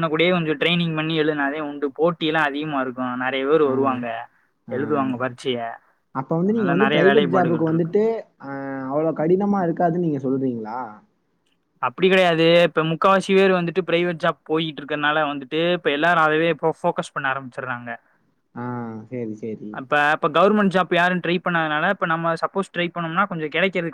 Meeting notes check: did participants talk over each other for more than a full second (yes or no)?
yes